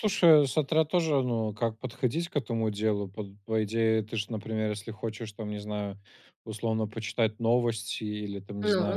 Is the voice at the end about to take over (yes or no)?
no